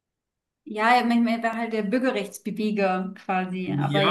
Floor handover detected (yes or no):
yes